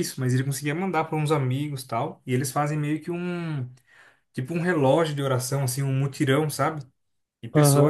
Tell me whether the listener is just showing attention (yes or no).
no